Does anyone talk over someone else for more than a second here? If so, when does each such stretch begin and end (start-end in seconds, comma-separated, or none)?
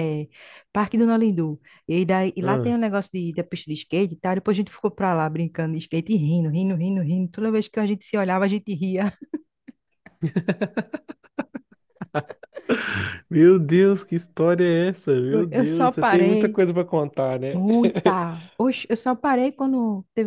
15.3-16.6